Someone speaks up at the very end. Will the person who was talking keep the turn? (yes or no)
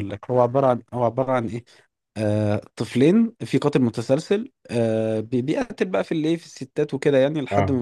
yes